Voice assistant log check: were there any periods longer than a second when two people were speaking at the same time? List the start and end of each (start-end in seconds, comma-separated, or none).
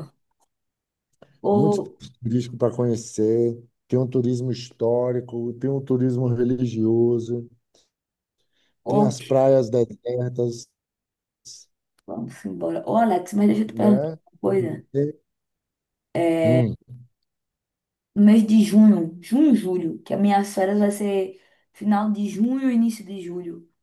none